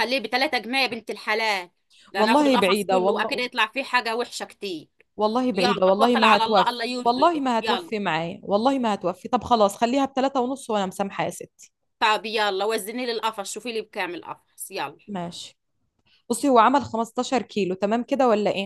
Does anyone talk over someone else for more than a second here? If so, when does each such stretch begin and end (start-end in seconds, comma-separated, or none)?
2.2-3.4, 5.5-7.9